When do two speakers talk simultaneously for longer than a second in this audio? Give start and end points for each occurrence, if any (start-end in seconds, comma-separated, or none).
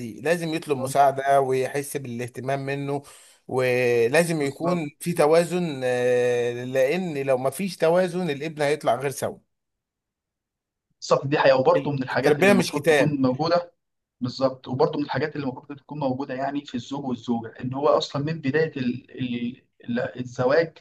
11.8-13.2